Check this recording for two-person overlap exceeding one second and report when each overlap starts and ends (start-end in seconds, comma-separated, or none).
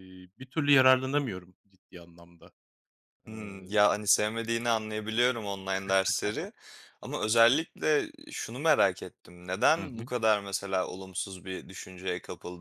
none